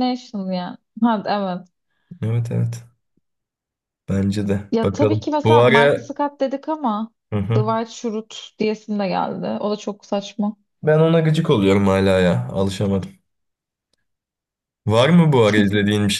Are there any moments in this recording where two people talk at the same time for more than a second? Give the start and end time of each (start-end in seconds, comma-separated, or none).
4.7-6.1